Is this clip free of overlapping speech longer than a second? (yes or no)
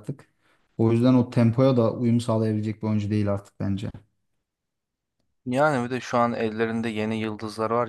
yes